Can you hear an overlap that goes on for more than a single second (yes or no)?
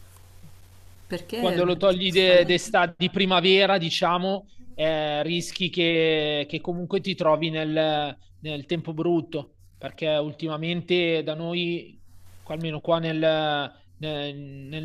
yes